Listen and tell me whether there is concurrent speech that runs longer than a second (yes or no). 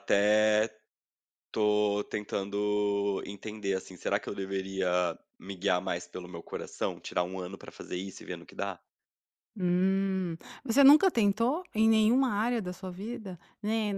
no